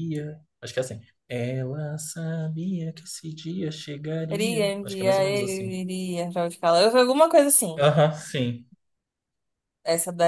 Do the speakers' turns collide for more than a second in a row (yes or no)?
yes